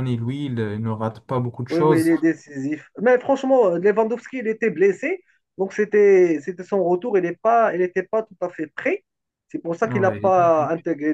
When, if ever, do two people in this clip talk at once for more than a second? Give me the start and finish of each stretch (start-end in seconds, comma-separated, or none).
none